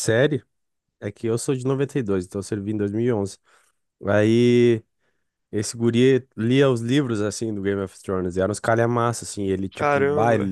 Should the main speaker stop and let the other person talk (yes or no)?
no